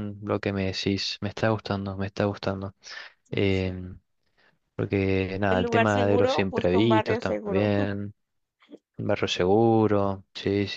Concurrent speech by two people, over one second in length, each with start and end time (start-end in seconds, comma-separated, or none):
5.5-7.7